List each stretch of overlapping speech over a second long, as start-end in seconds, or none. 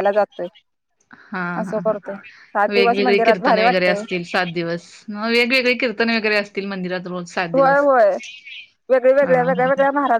2.7-4.0